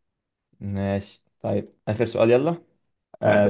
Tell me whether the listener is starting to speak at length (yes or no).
no